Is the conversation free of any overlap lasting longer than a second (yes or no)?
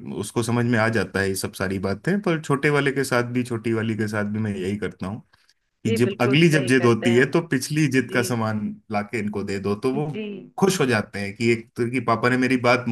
no